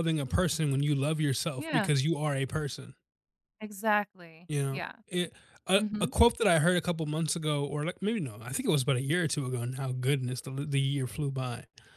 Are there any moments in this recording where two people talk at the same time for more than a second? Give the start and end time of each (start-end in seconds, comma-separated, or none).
none